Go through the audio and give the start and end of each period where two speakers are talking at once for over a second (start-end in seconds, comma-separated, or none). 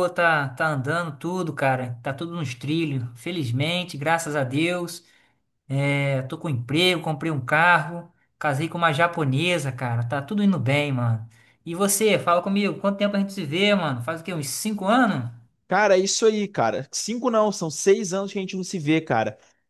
none